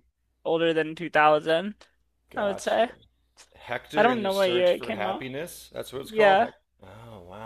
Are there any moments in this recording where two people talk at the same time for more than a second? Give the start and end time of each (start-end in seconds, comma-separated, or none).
4.0-5.3